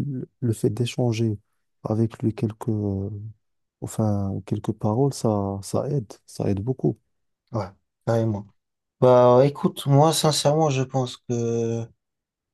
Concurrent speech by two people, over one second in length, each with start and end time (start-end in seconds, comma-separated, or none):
none